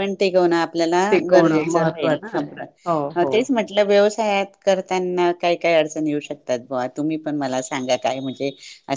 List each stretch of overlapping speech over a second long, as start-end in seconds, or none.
1.1-3.3